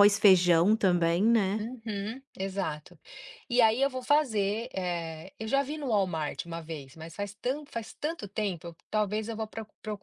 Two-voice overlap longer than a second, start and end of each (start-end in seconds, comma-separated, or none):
none